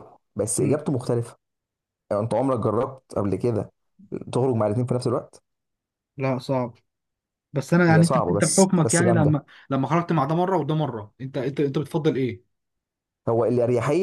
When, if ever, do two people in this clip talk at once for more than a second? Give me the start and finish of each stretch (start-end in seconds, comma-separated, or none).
7.9-9.4